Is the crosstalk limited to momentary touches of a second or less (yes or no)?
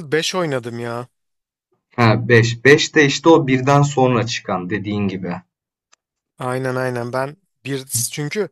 yes